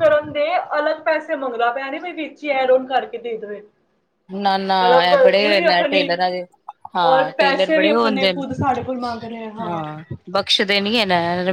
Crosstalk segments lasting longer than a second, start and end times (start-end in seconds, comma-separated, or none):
7.1-8.4